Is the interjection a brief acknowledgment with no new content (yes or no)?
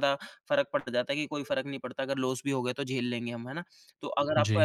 yes